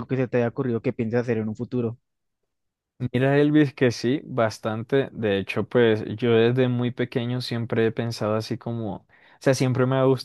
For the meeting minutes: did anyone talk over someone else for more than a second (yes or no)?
no